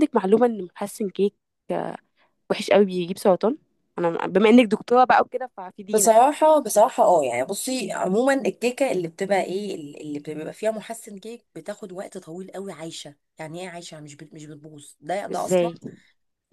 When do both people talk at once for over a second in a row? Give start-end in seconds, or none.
none